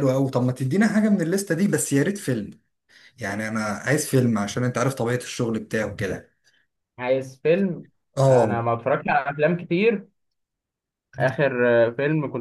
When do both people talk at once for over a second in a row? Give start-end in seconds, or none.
none